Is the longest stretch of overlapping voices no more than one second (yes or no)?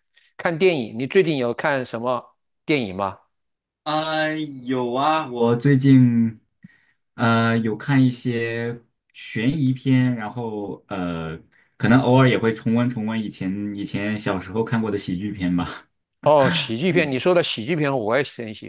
yes